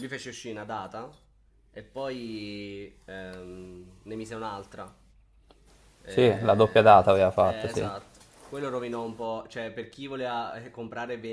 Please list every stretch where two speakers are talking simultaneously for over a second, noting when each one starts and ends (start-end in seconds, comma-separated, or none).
6.1-7.9